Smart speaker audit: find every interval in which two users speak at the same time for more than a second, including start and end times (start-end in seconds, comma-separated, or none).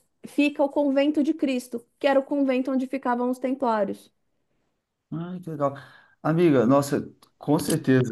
none